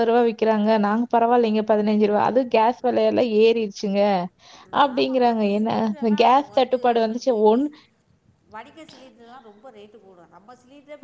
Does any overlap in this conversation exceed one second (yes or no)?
yes